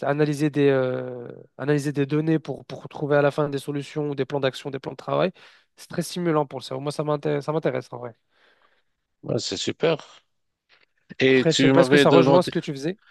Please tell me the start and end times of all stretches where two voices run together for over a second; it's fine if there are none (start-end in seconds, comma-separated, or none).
11.3-12.5